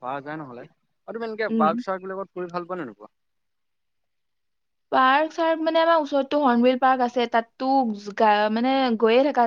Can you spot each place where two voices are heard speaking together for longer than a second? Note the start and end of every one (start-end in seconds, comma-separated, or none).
none